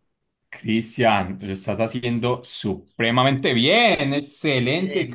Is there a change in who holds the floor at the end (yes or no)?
yes